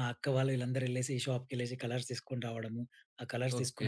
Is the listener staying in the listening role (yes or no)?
no